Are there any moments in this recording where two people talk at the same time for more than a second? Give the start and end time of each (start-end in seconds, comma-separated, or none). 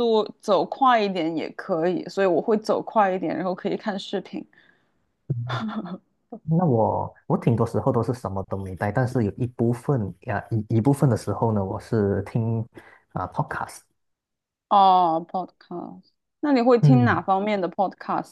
none